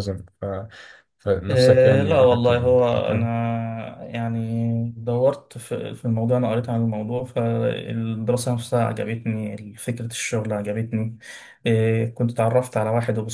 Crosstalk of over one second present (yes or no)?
yes